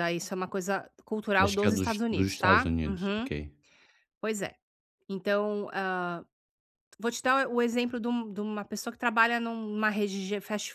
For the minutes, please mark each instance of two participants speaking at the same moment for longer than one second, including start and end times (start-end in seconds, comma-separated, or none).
1.4-3.3